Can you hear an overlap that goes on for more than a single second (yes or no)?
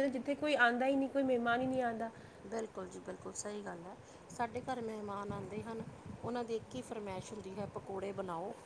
no